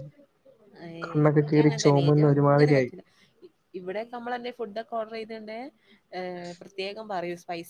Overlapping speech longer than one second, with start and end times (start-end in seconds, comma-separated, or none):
1.1-2.9